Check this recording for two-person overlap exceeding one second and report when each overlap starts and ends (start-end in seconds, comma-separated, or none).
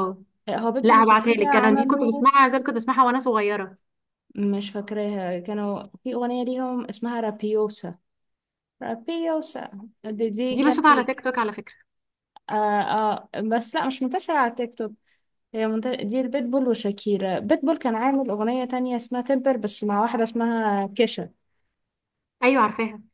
0.8-2.3